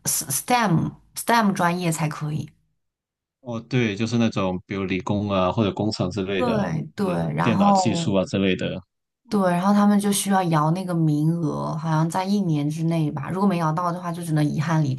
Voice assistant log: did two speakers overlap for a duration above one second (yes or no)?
yes